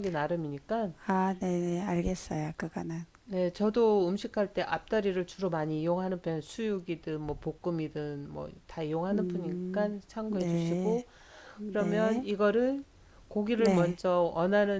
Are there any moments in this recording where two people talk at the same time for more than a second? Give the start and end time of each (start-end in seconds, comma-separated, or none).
9.1-11.0